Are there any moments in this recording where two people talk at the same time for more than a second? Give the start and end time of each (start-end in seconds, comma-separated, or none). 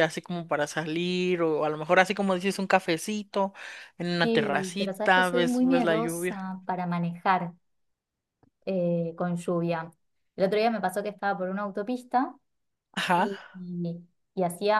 4.2-6.4